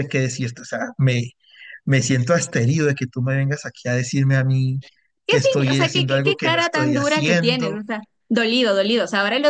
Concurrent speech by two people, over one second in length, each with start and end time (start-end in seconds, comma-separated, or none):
5.3-7.8